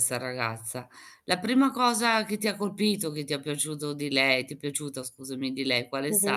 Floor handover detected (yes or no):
yes